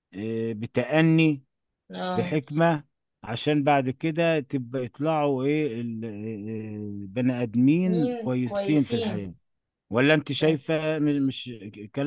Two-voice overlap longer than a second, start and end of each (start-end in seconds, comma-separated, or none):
7.8-9.3